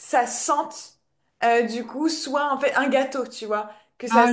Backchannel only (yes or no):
yes